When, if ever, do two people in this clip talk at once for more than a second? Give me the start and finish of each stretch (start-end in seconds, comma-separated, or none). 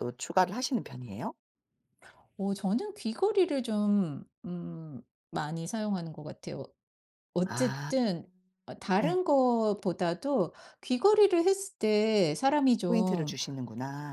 none